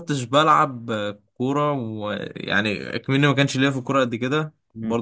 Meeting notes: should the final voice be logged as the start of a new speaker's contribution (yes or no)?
no